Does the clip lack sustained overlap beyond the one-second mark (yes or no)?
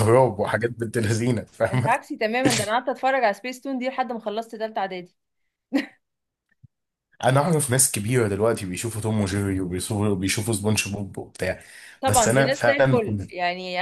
no